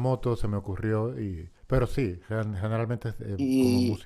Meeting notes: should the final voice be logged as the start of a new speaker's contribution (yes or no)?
yes